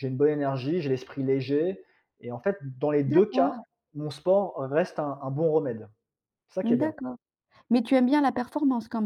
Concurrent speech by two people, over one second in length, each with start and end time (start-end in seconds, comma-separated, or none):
none